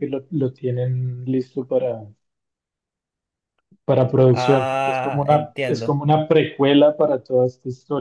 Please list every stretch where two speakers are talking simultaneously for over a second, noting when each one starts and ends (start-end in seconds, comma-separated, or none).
4.3-6.0